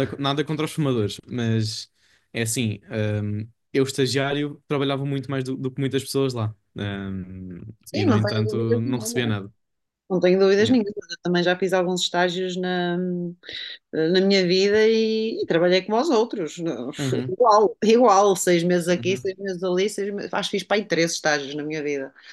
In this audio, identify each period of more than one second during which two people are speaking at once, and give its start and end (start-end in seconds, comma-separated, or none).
7.8-9.4